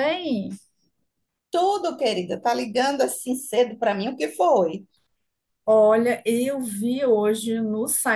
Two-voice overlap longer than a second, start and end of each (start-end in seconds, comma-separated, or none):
none